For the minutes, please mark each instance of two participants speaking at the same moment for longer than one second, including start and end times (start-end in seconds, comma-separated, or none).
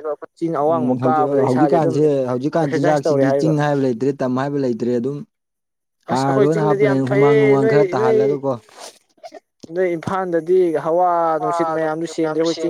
6.1-8.2